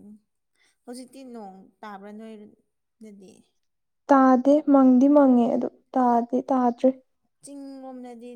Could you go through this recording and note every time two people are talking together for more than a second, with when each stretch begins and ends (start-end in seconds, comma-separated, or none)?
none